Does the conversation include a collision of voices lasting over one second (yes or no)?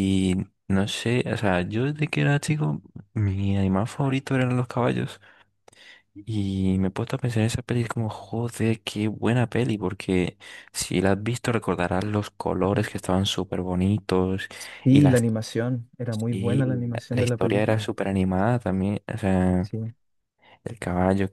yes